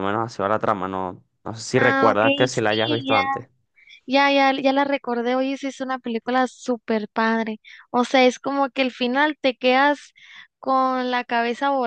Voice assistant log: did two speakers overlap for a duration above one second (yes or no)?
yes